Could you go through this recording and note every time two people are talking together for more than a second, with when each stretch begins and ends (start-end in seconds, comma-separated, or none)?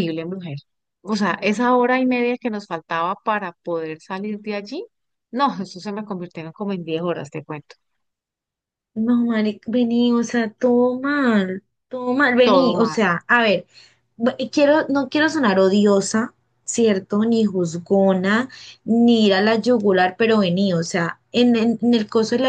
none